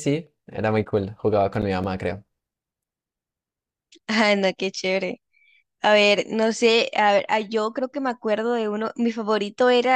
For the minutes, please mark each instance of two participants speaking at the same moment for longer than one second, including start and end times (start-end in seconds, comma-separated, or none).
none